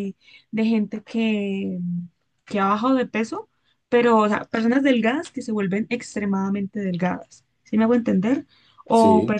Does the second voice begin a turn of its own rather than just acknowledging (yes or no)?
no